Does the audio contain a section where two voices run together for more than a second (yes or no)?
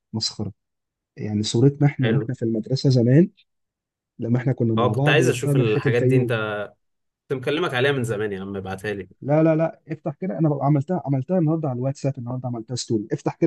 yes